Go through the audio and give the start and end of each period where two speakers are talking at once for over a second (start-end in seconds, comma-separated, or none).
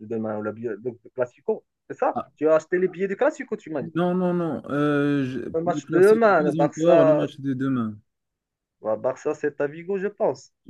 5.5-7.2